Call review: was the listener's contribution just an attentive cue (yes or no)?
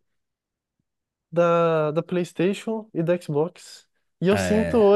yes